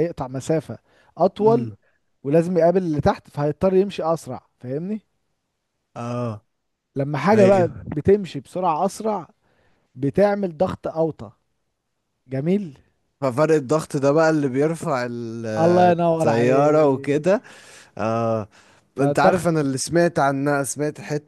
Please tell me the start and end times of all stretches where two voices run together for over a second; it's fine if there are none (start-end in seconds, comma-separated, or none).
15.9-17.4